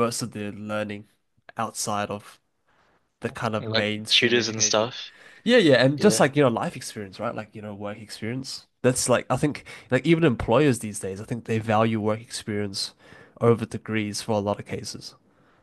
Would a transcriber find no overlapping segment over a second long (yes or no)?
no